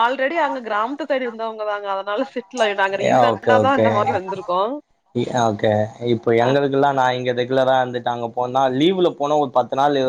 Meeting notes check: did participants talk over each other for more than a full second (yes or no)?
no